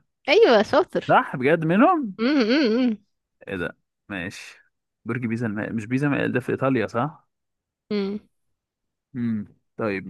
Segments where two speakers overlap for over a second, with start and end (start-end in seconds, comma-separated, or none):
none